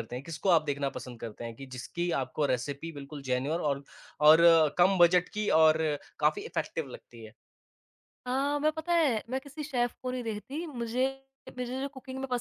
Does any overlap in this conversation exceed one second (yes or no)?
no